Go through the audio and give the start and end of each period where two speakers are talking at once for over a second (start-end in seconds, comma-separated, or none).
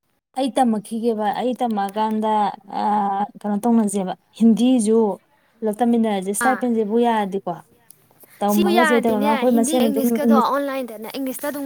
8.4-10.6